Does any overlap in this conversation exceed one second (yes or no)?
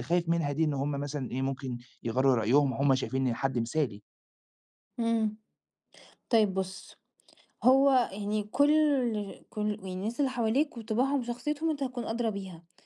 no